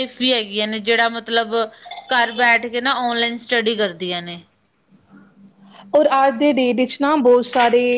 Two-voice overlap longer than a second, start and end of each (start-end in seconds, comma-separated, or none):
none